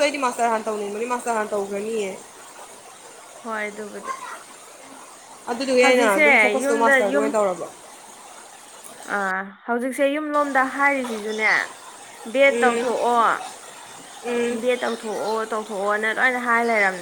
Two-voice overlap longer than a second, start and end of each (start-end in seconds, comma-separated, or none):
5.8-7.3